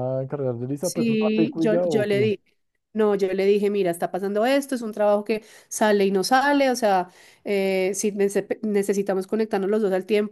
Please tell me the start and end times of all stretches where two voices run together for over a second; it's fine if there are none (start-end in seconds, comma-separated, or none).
0.8-2.3